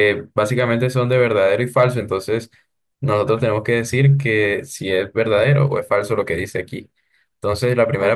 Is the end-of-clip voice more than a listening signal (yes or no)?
yes